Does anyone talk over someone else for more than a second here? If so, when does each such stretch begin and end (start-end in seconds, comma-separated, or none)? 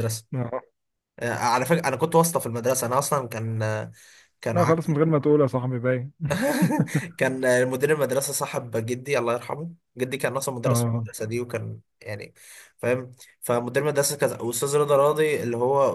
none